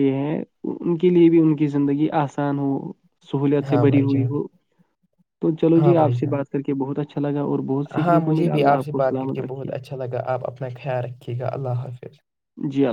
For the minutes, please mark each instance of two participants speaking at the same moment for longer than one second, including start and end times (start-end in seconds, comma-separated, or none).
8.1-9.7